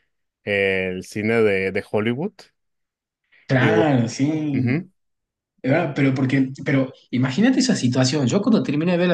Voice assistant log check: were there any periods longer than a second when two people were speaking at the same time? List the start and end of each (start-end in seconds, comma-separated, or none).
none